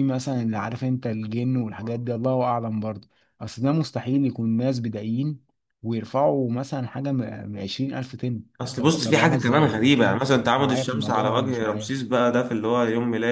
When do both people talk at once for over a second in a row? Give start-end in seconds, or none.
8.6-11.9